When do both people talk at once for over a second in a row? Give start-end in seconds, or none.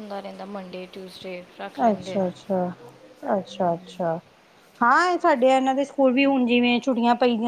none